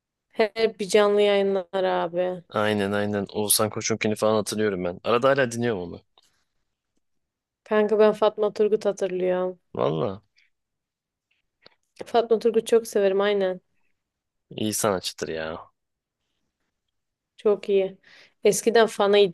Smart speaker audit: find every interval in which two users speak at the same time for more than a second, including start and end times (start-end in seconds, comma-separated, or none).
none